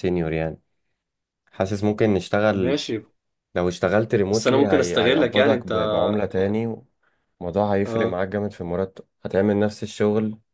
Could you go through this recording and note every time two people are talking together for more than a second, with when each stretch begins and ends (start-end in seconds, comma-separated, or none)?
4.3-5.7